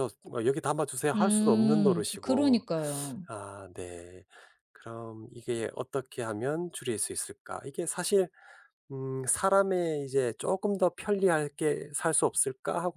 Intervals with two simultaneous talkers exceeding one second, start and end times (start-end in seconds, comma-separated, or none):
1.1-2.6